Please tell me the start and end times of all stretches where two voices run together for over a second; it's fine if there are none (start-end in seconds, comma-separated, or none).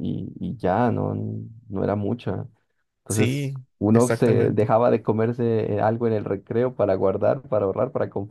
3.1-4.7